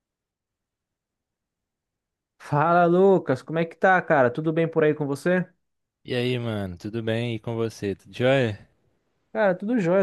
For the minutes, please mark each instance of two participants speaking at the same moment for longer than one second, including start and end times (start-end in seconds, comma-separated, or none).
none